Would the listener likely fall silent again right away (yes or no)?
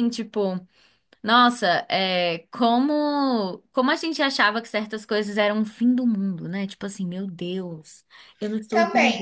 no